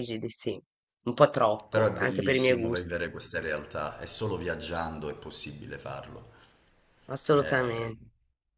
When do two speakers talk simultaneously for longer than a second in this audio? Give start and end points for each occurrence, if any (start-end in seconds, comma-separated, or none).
1.7-3.0